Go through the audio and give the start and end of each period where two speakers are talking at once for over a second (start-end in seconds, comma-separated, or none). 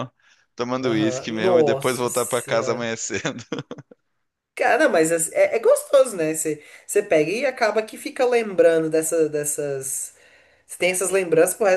0.8-2.9